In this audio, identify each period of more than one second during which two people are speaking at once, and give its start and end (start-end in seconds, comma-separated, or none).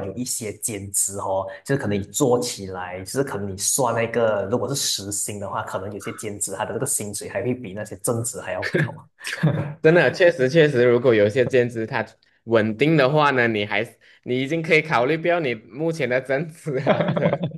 none